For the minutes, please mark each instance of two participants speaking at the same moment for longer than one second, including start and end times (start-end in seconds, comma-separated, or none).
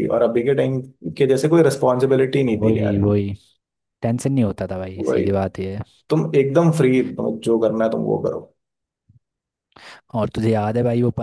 none